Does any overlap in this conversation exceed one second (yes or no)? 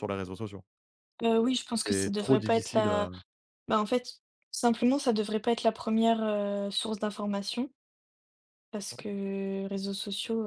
yes